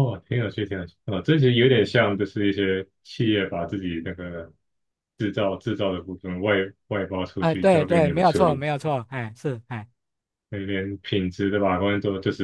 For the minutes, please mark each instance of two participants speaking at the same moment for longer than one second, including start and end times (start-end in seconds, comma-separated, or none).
7.4-8.6